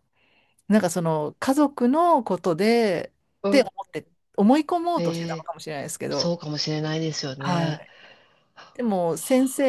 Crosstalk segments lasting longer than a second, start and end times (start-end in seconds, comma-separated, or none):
none